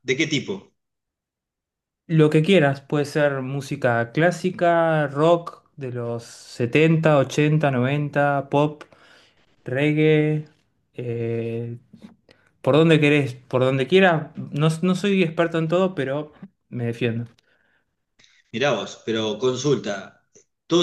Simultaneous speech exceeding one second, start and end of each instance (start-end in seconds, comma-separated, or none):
none